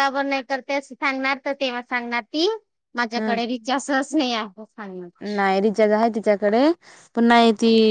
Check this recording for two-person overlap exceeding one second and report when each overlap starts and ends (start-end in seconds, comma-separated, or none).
none